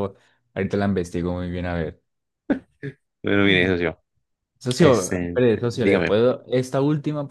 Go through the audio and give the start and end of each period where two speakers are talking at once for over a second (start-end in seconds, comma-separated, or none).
4.8-6.2